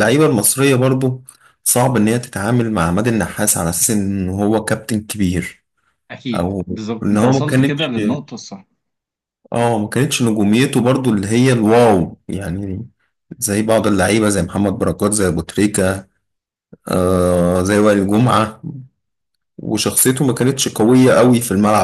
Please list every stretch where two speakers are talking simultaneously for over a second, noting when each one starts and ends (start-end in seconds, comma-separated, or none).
6.3-7.9